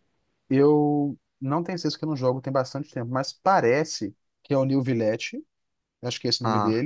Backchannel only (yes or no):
yes